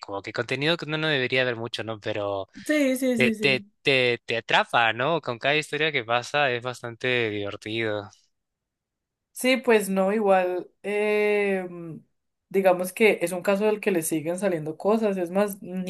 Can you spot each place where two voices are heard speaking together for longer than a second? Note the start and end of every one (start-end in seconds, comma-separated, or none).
none